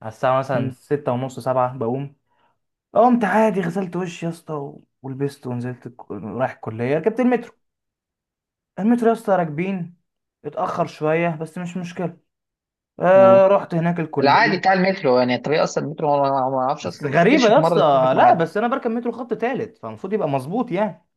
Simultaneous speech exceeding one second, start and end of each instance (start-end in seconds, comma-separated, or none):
16.8-18.4